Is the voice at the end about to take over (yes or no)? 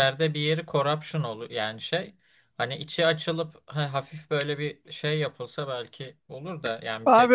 yes